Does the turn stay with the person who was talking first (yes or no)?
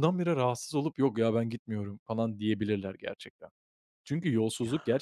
yes